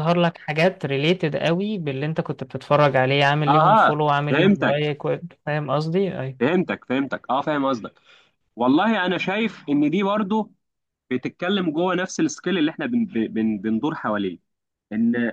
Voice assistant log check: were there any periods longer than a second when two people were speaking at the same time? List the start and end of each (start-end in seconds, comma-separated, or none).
3.5-4.8